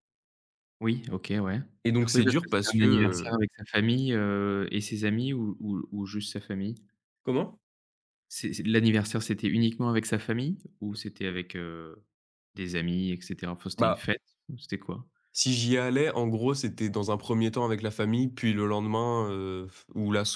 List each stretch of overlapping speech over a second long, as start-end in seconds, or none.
2.1-3.4